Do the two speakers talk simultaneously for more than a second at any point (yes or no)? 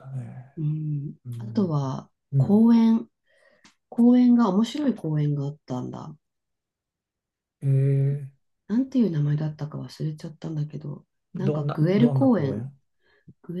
yes